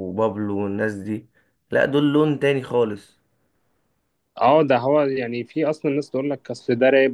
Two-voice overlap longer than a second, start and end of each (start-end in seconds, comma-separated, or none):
none